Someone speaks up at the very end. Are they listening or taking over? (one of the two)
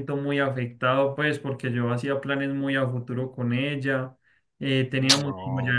listening